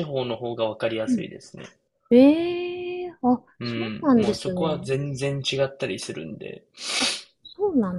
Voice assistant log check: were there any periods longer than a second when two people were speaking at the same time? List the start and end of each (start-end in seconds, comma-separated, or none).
3.6-4.9